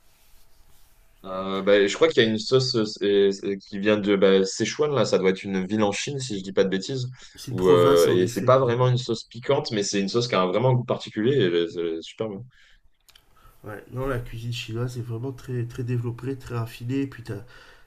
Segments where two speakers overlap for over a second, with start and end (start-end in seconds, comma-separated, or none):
7.5-8.8